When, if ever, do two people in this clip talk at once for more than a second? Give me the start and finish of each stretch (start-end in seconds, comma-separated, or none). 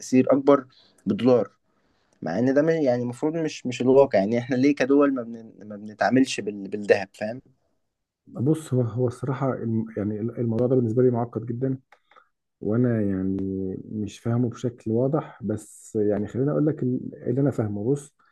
none